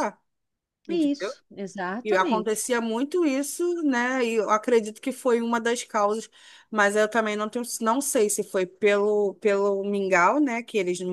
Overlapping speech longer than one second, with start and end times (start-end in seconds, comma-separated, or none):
none